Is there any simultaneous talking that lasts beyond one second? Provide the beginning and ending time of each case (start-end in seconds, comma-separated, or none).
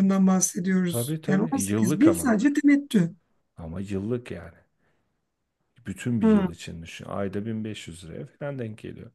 0.9-2.4